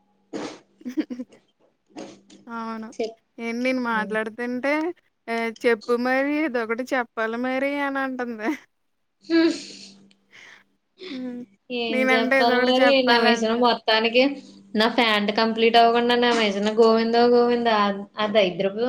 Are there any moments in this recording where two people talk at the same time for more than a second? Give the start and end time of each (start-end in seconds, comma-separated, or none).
11.9-13.7